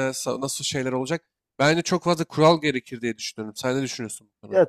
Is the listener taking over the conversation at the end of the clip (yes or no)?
yes